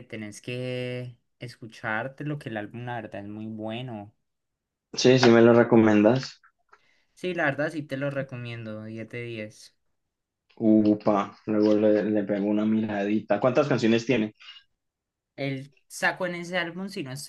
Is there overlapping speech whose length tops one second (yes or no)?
no